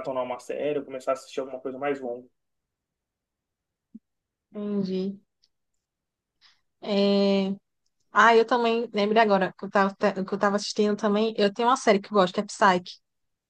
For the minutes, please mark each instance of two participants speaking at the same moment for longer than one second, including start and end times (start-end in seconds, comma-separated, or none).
none